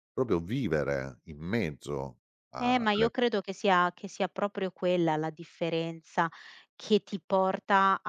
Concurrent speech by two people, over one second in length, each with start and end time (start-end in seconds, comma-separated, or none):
none